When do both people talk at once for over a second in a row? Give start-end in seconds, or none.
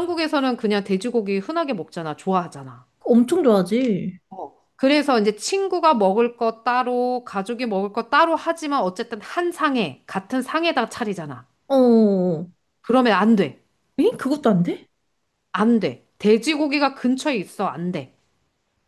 none